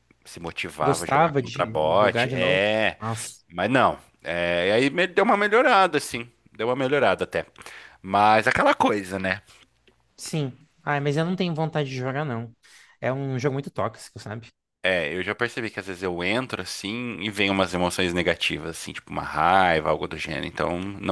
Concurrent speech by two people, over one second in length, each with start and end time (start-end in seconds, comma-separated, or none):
0.8-2.6